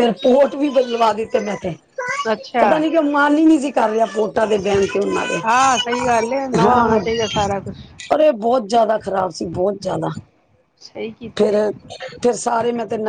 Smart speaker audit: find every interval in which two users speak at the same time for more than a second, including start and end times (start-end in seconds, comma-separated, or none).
5.4-7.0